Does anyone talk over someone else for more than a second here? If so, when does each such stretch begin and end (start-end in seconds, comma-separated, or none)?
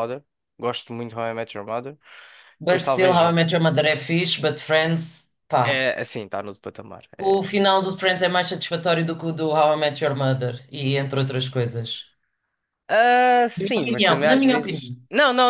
13.6-14.9